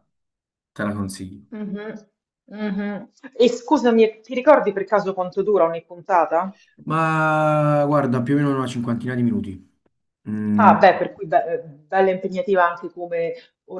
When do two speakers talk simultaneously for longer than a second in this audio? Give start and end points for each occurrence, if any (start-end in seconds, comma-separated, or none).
none